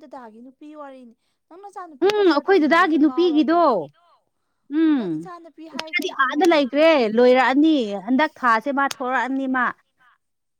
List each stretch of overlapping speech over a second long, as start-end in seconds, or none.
2.0-3.6